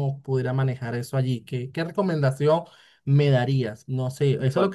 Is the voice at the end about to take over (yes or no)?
no